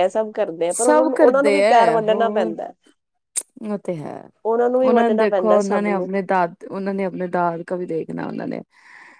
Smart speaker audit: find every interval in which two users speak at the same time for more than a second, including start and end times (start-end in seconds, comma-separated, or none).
0.8-2.5, 4.8-6.1